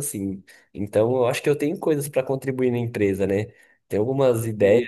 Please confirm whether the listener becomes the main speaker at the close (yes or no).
no